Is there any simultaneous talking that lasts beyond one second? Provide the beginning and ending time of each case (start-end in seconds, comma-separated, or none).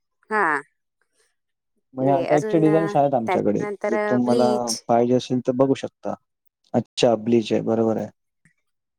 2.0-4.5